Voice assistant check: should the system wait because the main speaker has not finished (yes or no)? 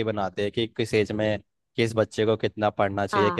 yes